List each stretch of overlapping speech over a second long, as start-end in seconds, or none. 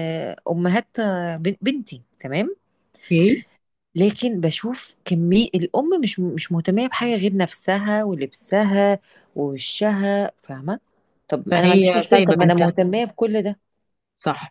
11.5-12.7